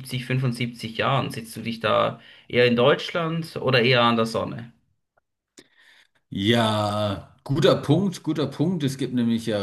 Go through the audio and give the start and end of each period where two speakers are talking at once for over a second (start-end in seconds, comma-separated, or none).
none